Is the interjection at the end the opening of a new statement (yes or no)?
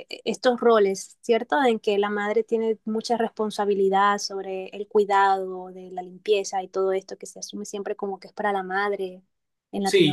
yes